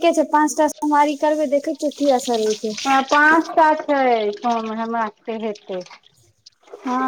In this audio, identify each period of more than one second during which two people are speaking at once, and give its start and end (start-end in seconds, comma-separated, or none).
none